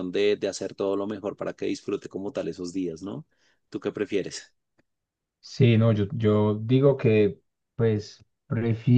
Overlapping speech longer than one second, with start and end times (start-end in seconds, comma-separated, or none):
none